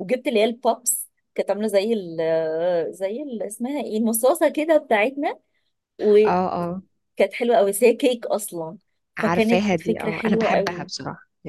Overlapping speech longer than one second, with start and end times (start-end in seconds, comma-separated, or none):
9.2-10.9